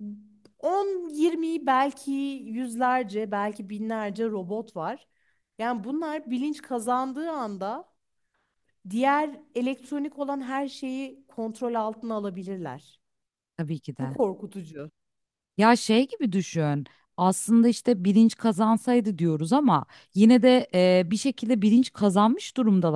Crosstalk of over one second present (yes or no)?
no